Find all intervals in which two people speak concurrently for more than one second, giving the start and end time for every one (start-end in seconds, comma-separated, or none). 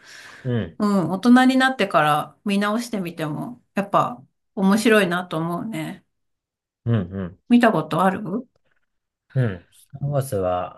none